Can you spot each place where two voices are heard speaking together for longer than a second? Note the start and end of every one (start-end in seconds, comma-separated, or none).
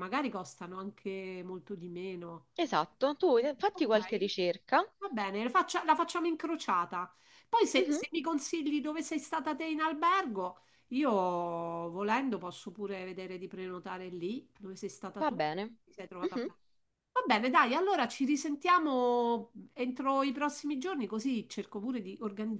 none